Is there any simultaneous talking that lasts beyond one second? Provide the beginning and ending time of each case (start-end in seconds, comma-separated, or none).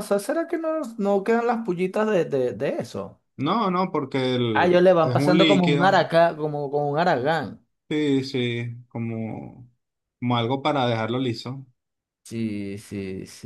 4.5-6.0